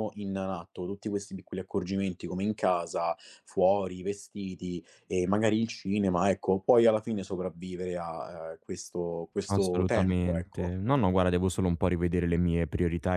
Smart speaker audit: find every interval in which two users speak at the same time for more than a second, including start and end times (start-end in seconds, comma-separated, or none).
9.5-10.8